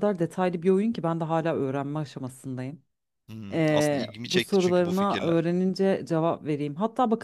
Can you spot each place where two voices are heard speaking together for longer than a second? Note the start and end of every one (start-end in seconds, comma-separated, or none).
3.5-5.5